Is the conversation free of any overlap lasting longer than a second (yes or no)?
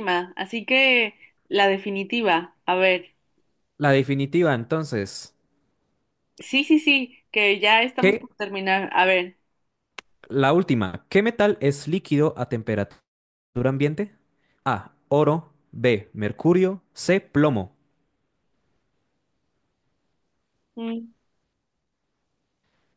yes